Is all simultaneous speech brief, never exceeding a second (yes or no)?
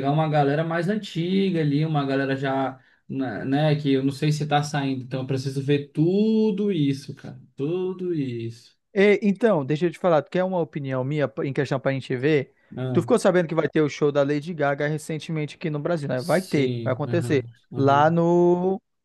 no